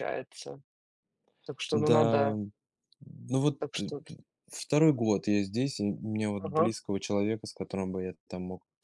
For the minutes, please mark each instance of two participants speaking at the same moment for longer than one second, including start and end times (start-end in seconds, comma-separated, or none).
none